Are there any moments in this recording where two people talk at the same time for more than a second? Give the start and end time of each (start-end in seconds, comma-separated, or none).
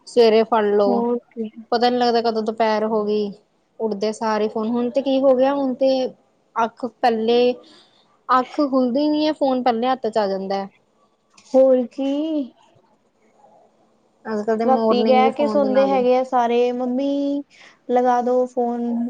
14.7-16.1